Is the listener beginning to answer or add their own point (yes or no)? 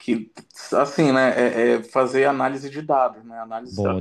no